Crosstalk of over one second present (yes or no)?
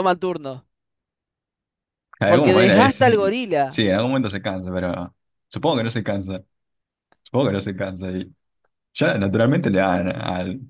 yes